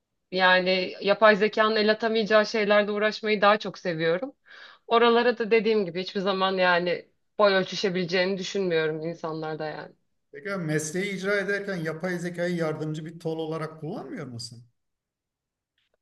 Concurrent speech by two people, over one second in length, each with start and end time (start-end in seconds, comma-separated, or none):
none